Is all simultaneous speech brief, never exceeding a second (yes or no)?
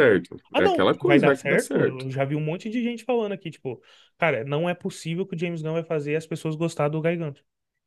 no